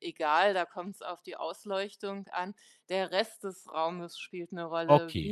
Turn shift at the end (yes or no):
no